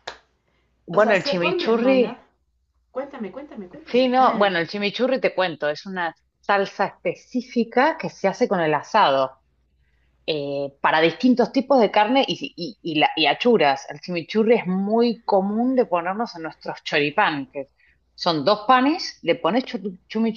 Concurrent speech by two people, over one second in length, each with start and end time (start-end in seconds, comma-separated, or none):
0.9-2.2